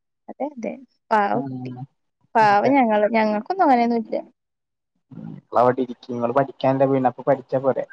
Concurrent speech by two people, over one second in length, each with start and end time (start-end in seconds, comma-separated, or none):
none